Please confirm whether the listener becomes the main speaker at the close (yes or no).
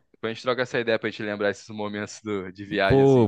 yes